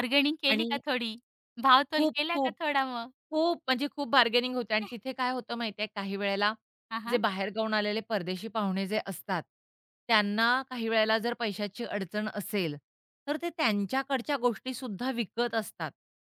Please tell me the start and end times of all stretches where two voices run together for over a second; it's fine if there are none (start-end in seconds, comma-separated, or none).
none